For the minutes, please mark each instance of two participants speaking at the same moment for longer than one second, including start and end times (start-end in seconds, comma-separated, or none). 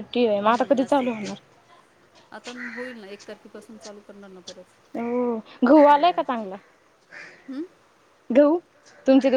none